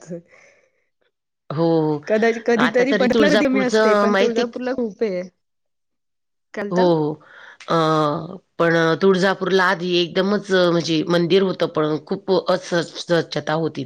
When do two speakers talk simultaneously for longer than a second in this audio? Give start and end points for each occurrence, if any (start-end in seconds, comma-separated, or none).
2.6-4.4